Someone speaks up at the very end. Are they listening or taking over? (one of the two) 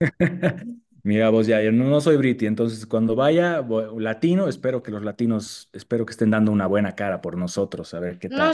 taking over